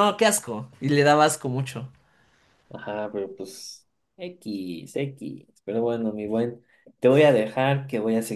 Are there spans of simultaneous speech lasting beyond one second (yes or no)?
no